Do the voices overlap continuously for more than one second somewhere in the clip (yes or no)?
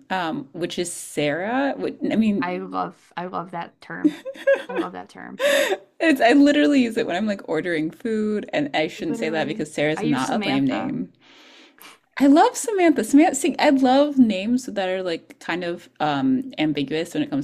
yes